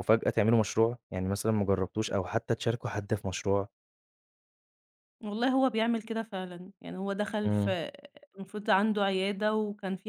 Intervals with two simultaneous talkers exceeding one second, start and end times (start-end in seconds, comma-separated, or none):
none